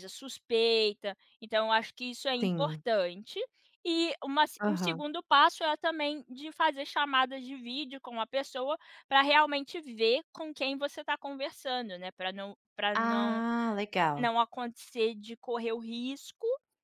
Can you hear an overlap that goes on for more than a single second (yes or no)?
no